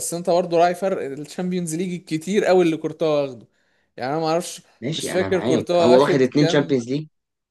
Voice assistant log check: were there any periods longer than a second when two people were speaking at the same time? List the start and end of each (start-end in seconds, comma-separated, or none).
4.8-6.9